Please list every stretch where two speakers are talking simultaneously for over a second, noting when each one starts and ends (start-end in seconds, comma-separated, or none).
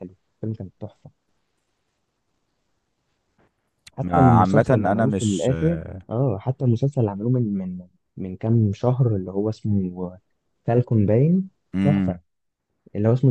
4.0-5.5